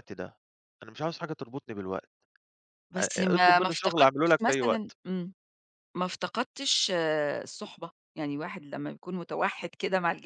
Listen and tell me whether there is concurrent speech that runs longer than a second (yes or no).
yes